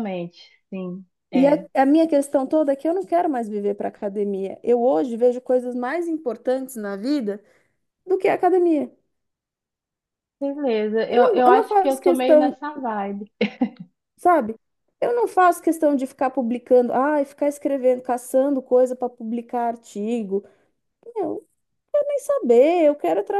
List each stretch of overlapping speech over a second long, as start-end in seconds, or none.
11.1-12.6